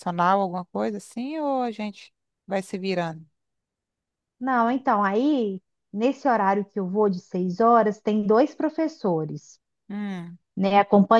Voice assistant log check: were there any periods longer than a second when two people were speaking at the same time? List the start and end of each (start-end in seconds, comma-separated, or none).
none